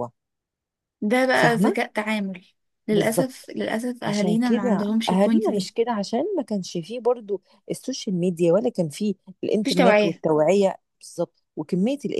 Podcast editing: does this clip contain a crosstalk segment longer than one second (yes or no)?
yes